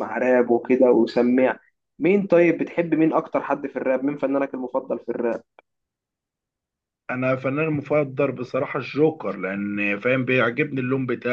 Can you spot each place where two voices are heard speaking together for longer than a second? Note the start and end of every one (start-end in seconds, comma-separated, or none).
none